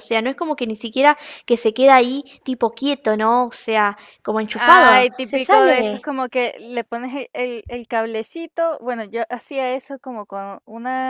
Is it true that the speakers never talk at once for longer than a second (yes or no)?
no